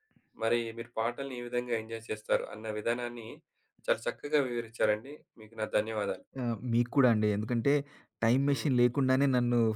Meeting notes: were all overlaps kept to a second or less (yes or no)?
yes